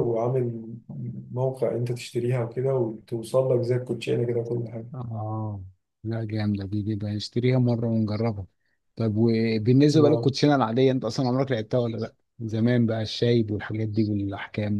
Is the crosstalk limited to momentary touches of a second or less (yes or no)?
yes